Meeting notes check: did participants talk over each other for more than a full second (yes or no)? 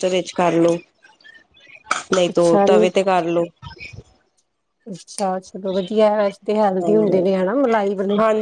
no